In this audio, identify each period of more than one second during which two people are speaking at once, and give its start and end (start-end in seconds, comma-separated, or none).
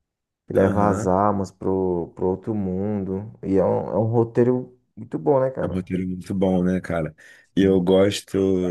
none